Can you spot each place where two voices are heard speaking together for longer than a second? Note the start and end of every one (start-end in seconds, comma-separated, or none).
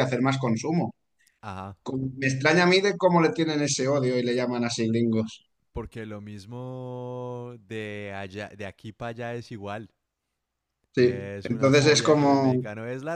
11.0-12.6